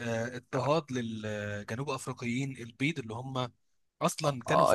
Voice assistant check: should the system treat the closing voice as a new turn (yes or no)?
yes